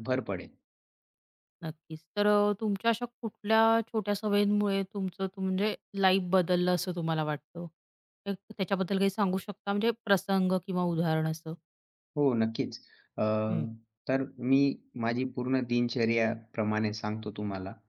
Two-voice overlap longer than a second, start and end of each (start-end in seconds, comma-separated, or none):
none